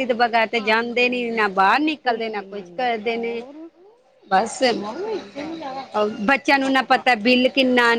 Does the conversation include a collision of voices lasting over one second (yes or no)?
yes